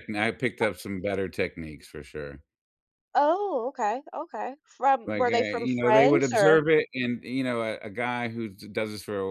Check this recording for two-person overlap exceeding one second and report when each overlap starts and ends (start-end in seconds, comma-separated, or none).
5.1-6.6